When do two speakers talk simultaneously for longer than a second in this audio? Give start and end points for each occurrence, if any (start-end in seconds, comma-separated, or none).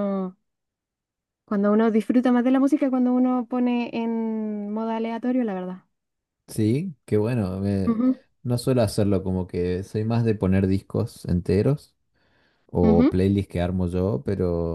none